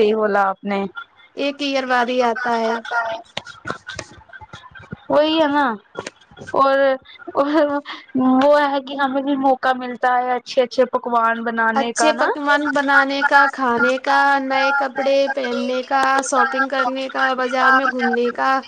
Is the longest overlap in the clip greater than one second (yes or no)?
no